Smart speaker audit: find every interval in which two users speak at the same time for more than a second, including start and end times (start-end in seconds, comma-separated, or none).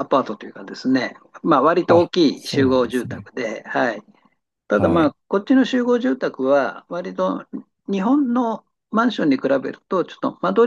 1.9-3.3